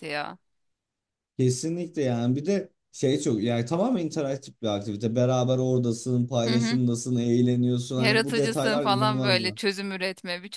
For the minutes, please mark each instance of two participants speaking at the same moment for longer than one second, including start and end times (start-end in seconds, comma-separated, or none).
8.0-9.6